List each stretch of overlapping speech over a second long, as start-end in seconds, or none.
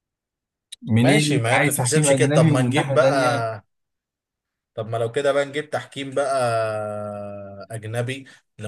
1.0-3.1